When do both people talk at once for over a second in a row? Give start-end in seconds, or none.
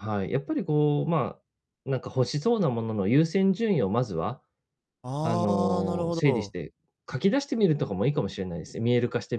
5.2-6.5